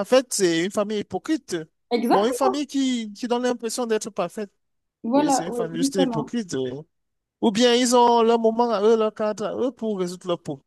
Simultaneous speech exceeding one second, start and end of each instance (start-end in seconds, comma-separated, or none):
5.1-6.3